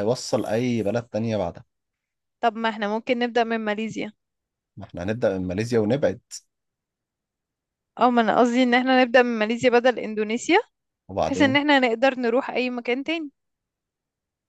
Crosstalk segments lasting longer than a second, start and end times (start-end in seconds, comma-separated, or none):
none